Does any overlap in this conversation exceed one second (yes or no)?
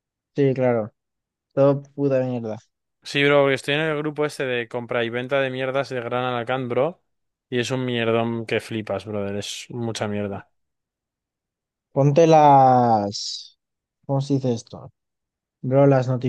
no